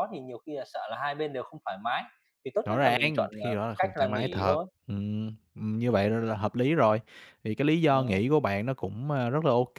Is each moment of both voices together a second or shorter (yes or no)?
no